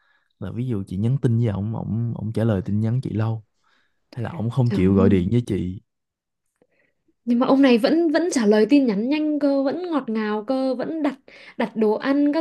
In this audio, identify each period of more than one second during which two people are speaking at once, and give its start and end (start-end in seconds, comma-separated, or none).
none